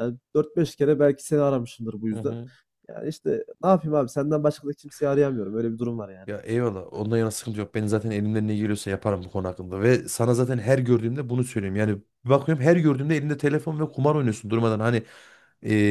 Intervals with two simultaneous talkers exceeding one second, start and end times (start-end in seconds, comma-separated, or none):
none